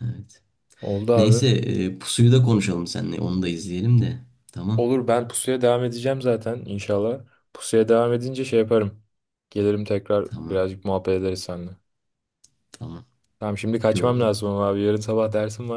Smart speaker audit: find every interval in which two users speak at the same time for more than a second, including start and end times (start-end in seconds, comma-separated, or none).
none